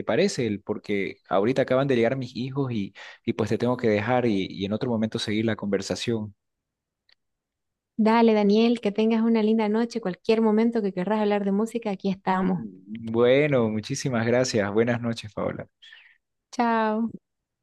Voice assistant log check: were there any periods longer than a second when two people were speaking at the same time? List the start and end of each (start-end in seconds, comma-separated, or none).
none